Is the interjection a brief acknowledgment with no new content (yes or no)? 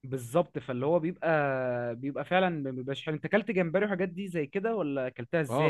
no